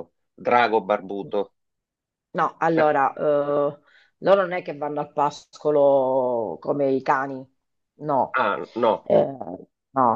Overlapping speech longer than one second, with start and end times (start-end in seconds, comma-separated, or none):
none